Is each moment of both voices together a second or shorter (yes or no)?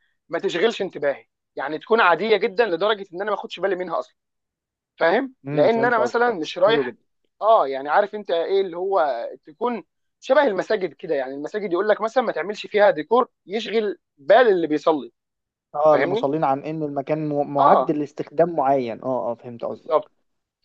no